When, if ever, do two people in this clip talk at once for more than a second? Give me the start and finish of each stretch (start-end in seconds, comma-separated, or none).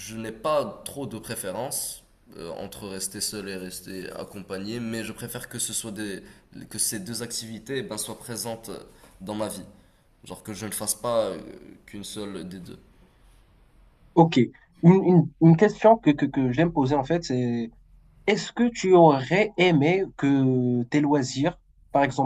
none